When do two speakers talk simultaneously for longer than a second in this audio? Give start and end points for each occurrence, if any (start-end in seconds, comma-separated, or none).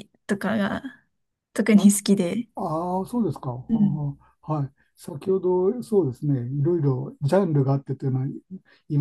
none